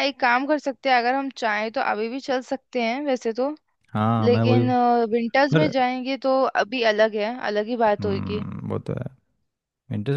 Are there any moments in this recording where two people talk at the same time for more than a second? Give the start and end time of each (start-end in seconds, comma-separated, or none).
none